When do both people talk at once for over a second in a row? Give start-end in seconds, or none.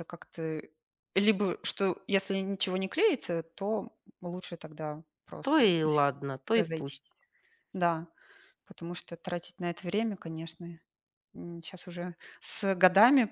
none